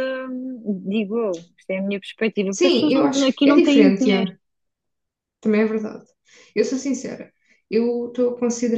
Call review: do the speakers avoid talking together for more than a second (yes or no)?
no